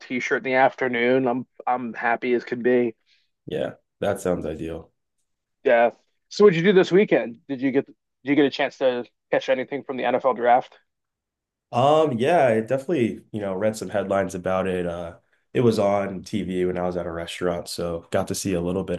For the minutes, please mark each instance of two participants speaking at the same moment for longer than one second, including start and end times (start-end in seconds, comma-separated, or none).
none